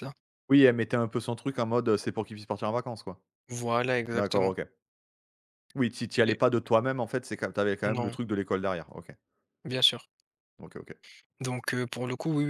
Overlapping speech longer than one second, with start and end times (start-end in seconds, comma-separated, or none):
none